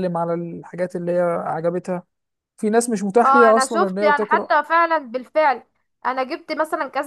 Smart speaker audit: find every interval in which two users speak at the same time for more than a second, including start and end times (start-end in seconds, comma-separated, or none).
3.2-4.5